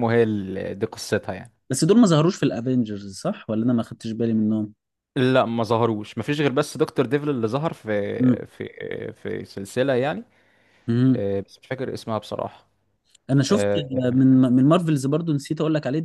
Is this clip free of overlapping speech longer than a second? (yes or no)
yes